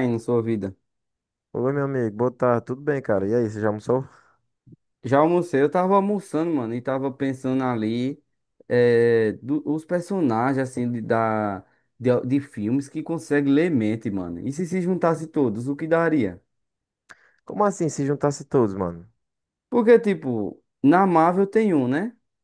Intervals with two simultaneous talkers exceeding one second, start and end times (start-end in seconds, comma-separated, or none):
none